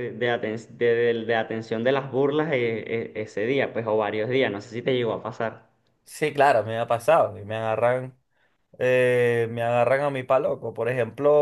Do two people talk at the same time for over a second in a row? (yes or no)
no